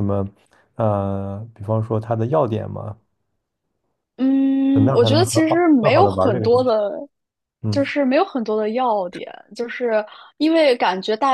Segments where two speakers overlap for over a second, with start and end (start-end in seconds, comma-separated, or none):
4.7-6.8